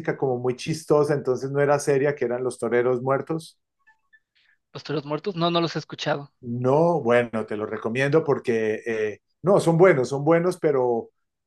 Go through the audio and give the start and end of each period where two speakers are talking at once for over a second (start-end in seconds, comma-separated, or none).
none